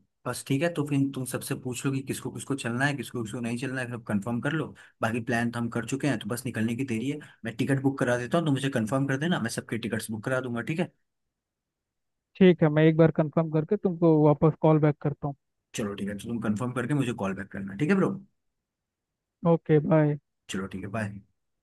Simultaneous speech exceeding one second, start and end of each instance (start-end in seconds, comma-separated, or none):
none